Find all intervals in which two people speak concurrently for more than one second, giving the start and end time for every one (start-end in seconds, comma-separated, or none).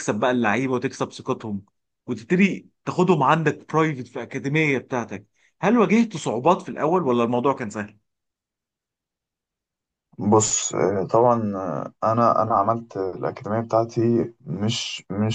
none